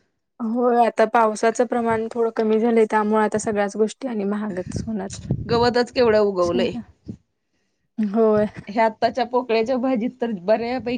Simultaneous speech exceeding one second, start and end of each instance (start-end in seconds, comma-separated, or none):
none